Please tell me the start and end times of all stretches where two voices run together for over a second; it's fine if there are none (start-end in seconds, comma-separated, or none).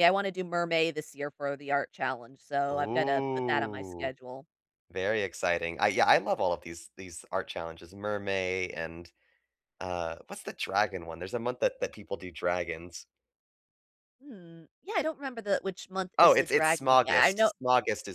2.7-4.1, 16.2-17.5